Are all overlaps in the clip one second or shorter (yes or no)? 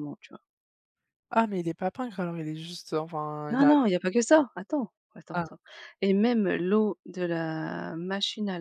yes